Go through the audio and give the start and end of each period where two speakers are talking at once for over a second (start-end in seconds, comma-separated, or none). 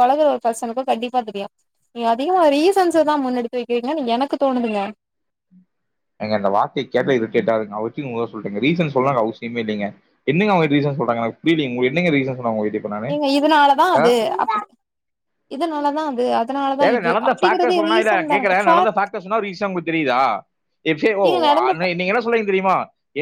16.9-18.9